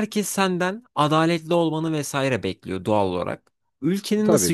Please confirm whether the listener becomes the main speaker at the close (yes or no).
no